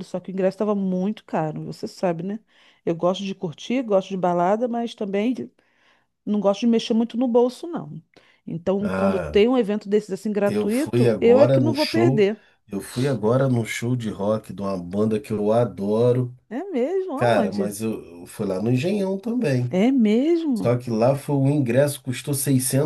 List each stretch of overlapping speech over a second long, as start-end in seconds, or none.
10.4-12.3